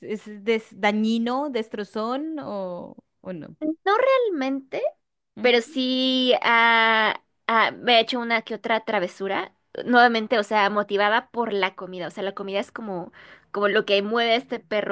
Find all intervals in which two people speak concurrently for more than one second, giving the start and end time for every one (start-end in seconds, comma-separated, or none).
none